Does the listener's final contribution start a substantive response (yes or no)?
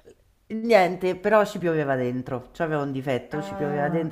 no